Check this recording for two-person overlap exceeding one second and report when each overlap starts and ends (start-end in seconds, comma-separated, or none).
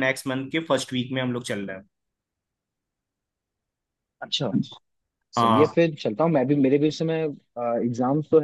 none